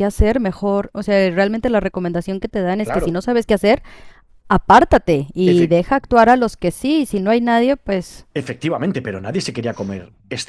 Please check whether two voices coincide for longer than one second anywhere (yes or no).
no